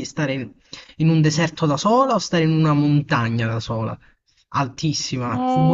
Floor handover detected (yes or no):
yes